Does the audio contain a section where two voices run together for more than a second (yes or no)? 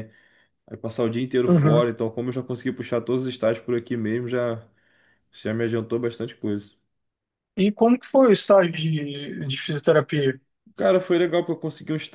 no